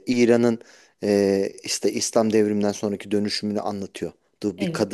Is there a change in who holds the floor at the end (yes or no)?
no